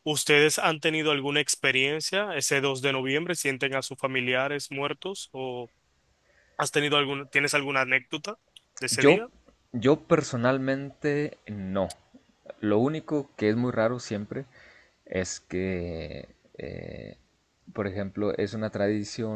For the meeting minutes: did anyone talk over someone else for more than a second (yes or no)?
no